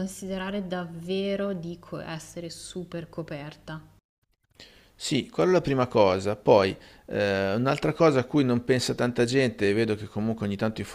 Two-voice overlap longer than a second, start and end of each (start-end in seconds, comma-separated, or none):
none